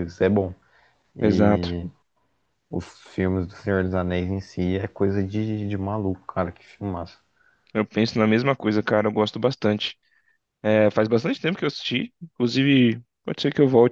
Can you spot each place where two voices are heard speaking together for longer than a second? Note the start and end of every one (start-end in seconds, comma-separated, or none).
none